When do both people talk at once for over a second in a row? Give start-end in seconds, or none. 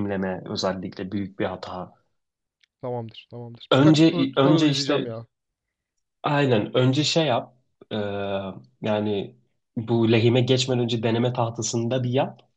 3.7-5.1